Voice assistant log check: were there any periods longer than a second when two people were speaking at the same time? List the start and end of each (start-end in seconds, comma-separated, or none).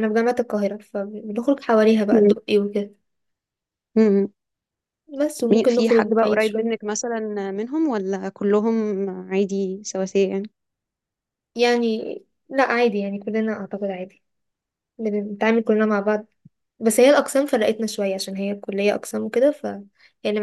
5.5-6.8